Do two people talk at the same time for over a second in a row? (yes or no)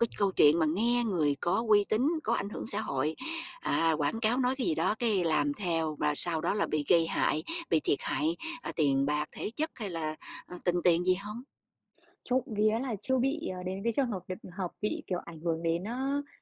no